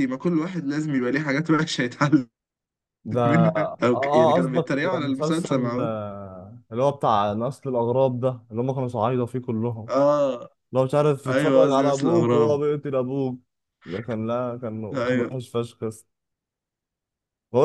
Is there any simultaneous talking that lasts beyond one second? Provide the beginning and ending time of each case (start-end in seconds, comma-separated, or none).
3.2-5.9, 11.3-12.6